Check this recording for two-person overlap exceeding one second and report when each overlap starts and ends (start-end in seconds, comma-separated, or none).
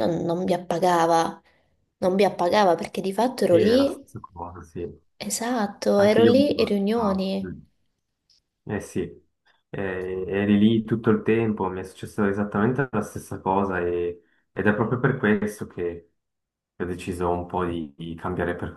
6.0-7.3